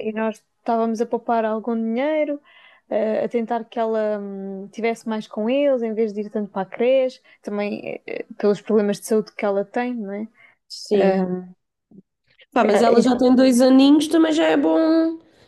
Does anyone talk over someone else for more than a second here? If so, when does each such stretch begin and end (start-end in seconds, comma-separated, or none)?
none